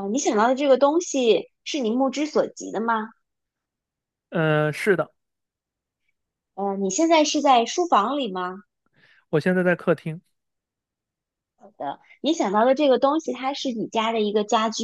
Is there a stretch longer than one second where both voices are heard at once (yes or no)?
no